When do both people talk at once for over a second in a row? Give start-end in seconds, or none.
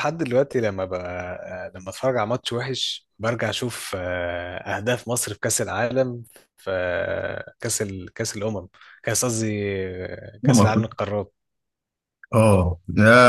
none